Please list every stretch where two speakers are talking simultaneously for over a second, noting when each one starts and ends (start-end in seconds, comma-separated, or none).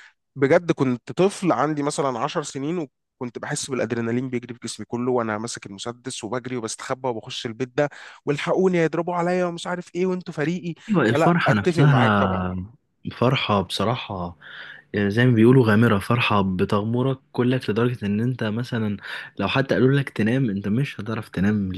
10.9-12.5